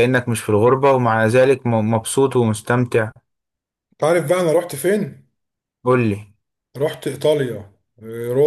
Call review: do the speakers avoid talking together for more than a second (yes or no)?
yes